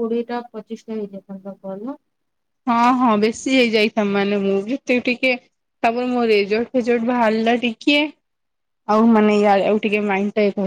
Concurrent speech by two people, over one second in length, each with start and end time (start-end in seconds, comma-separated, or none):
none